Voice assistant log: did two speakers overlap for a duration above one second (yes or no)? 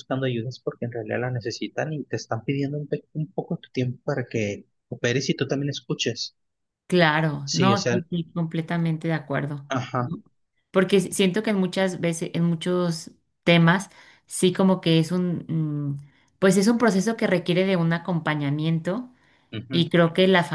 no